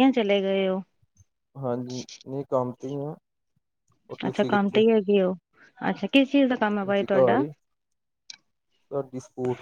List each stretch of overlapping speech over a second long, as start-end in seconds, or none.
none